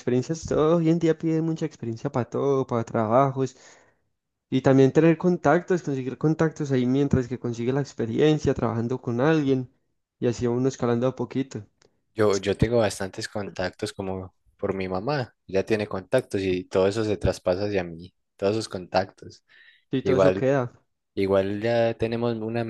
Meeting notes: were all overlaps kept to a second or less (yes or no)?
yes